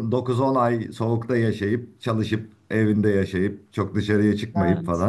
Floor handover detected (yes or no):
no